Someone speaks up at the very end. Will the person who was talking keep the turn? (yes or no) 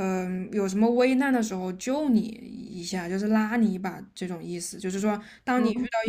yes